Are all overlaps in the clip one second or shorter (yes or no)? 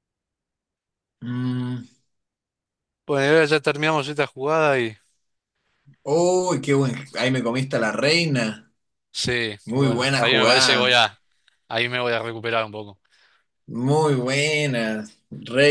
no